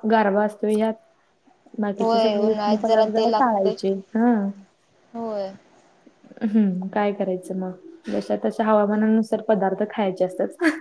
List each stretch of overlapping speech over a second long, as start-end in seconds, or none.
2.0-3.7